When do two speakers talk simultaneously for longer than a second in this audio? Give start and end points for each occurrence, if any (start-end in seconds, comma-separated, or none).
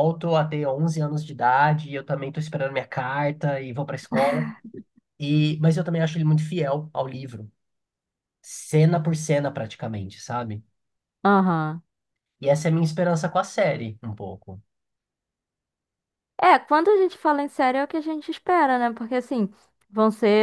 none